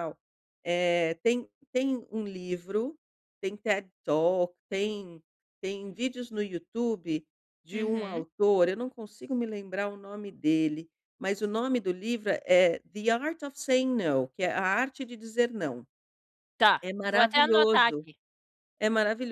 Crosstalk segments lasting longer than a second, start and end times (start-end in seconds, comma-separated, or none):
16.8-18.1